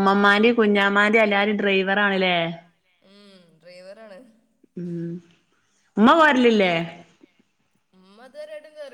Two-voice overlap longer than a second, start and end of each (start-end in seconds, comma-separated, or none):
0.6-2.4